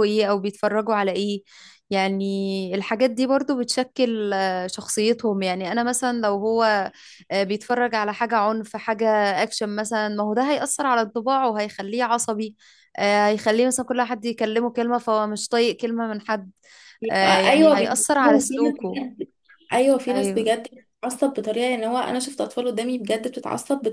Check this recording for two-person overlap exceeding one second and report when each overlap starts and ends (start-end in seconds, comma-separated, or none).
17.1-19.0